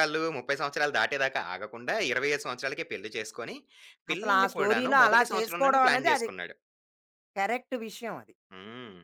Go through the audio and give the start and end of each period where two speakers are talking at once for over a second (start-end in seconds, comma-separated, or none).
4.1-6.3